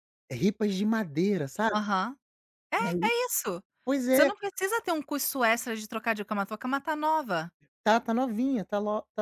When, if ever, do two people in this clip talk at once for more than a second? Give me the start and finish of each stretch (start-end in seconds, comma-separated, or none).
none